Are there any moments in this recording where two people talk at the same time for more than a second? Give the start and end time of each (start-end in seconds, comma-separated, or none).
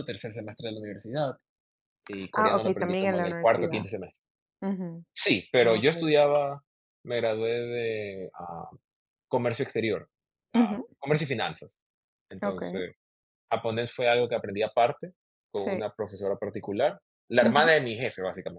2.3-3.9